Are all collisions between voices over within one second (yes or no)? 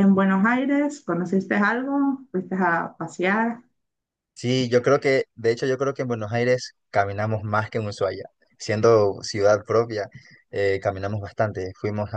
yes